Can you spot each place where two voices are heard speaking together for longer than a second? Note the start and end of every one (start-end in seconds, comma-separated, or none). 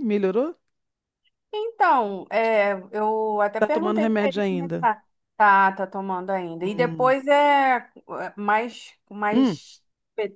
3.6-4.9